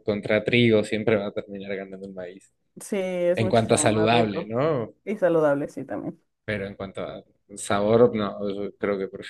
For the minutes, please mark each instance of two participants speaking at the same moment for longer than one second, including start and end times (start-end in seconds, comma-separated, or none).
3.3-4.5